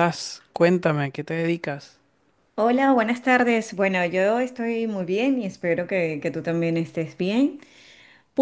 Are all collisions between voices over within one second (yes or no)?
yes